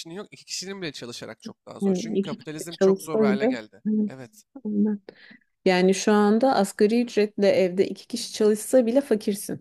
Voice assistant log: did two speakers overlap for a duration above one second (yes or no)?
yes